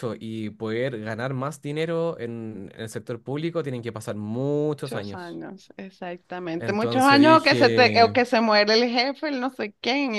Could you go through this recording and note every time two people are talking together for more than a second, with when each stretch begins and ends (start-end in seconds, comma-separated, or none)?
6.6-8.2